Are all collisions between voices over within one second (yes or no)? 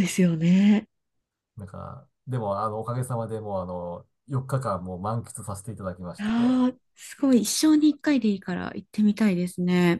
yes